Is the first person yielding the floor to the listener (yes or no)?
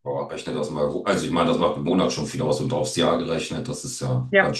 yes